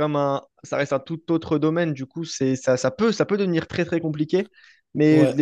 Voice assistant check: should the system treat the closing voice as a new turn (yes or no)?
no